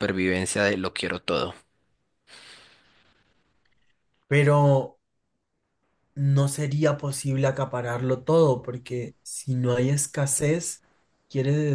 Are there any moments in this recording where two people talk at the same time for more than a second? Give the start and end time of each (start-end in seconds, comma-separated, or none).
none